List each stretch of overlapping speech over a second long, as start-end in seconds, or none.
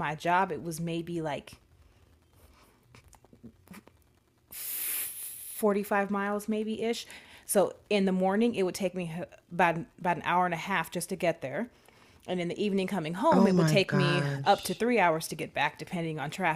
13.3-14.8